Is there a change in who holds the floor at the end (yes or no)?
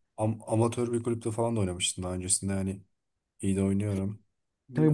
yes